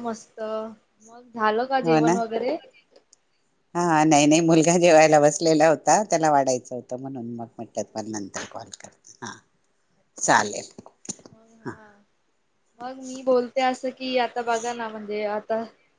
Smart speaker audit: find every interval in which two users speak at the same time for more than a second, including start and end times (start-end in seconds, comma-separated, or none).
none